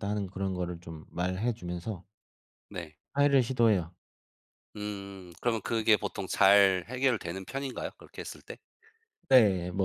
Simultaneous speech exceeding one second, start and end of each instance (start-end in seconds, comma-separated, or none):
none